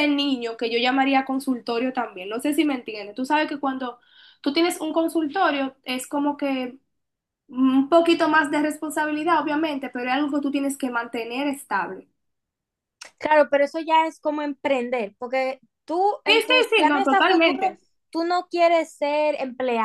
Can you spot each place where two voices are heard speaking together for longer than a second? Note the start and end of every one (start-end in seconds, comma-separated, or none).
16.2-17.6